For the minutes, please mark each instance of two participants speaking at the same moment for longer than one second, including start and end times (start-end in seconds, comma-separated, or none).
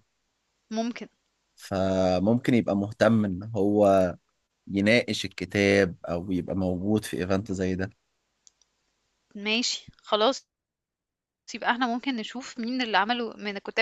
none